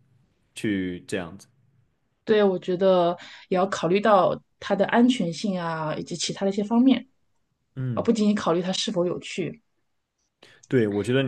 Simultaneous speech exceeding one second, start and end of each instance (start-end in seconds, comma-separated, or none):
none